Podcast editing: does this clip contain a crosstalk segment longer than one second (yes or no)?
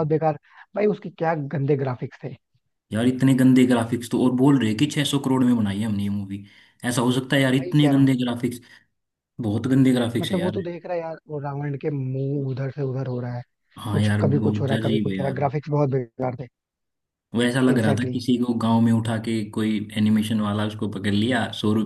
yes